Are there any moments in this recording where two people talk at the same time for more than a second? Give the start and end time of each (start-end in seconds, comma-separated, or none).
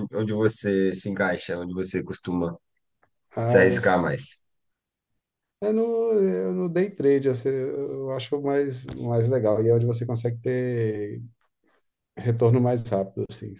none